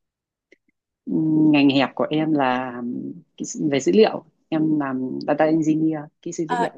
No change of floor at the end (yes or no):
no